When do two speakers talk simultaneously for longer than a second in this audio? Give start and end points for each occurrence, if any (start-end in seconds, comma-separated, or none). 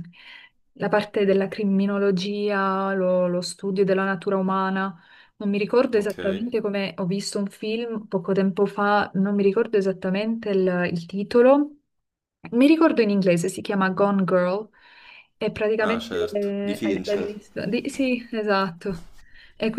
15.8-17.4